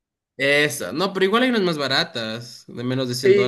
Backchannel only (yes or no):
no